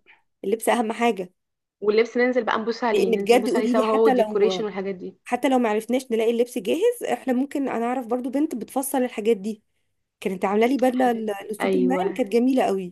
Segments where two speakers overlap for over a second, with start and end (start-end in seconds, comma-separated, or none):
2.9-4.7, 10.9-12.2